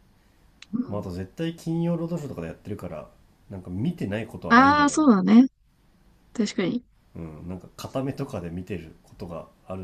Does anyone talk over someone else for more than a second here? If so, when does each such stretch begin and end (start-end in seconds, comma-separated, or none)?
none